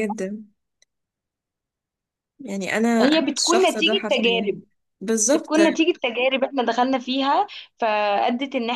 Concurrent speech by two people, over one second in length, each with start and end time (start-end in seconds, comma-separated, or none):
3.0-4.5